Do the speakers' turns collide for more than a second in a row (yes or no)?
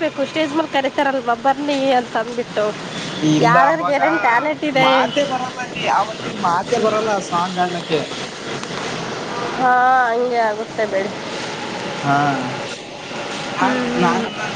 no